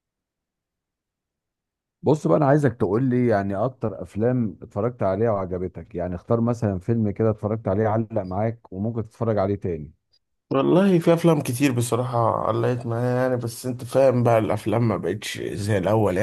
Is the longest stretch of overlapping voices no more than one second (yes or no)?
yes